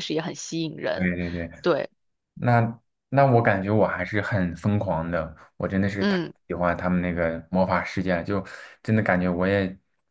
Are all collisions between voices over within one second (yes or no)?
yes